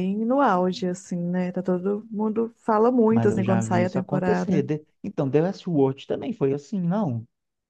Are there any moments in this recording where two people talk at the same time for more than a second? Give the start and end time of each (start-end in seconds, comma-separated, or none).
3.1-4.6